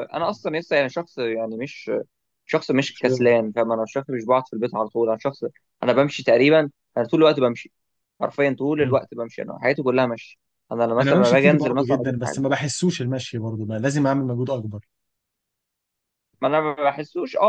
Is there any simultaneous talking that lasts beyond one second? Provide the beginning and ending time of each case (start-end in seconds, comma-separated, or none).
11.0-12.4